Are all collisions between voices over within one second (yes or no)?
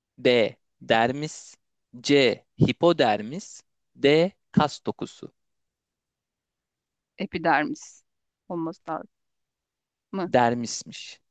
yes